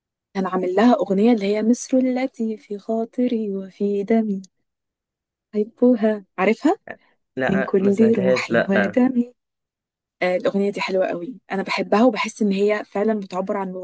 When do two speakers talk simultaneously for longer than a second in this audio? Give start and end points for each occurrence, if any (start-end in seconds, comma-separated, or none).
7.5-9.0